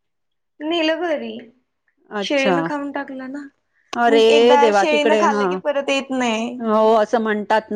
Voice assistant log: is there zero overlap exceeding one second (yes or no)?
no